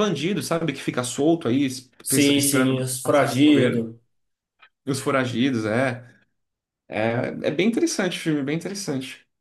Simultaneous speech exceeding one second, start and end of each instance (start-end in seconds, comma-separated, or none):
2.0-3.8